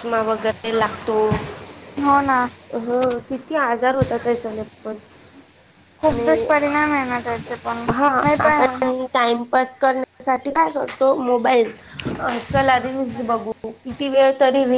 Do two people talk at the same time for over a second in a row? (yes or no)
no